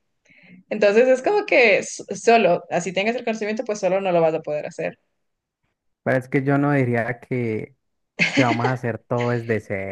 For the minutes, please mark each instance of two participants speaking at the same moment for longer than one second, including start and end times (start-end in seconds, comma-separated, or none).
none